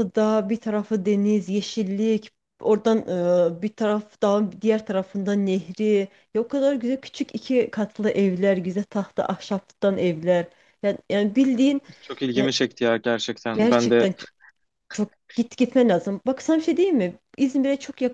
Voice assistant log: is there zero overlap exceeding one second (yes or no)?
yes